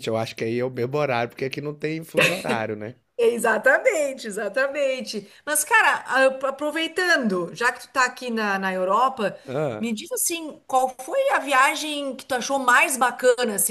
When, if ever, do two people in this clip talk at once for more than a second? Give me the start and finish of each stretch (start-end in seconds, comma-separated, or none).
none